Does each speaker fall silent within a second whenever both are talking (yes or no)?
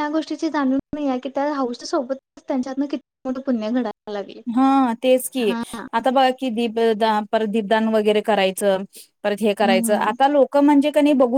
yes